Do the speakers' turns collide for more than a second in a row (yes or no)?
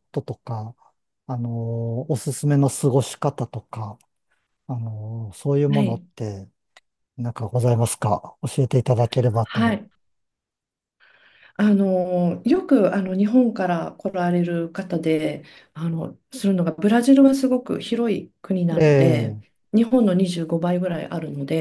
no